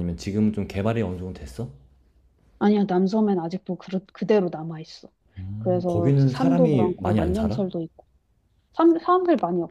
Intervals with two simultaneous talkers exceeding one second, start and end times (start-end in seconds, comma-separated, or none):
5.6-7.7